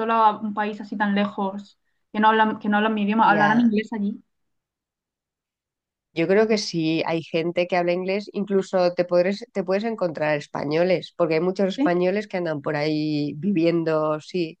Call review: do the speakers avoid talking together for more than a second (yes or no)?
yes